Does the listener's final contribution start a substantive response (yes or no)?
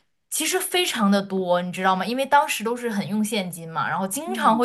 no